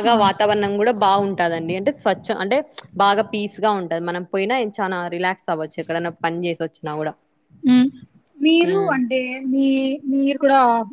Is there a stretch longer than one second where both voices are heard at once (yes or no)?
no